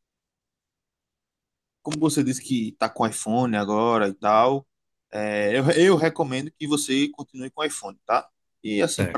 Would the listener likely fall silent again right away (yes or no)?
yes